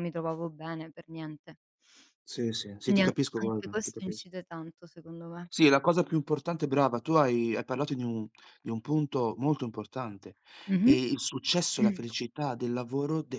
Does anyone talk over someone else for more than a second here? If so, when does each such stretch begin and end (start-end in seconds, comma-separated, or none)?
2.8-4.3